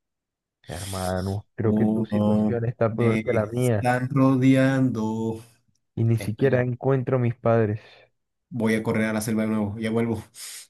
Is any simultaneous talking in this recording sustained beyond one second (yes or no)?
yes